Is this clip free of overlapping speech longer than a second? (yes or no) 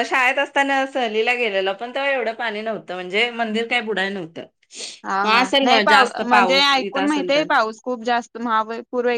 no